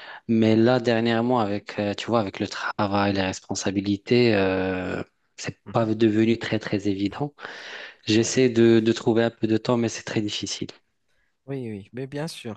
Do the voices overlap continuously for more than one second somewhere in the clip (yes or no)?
no